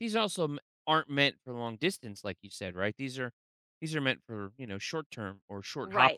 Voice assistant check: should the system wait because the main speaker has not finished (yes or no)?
no